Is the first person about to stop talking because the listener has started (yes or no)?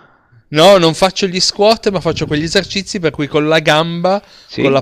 no